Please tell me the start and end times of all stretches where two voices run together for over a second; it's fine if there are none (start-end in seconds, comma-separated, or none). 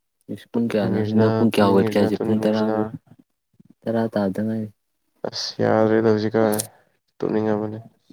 0.5-2.8